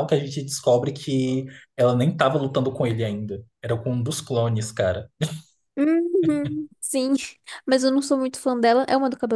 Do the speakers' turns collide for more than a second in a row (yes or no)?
no